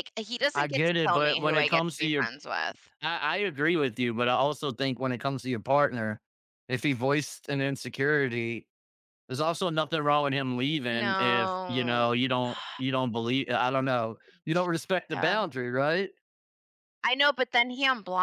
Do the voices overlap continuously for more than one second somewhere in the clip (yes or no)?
yes